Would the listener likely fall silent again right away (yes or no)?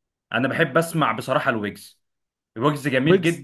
yes